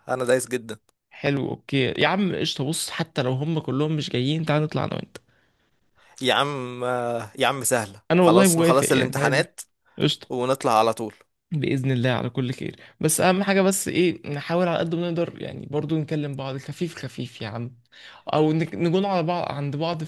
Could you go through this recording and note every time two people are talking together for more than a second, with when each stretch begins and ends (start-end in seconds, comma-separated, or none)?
8.1-9.4